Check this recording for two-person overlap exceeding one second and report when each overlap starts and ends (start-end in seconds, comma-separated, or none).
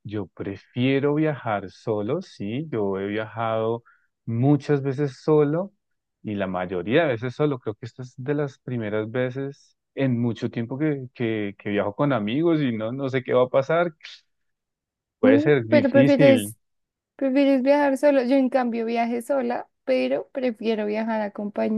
15.2-16.5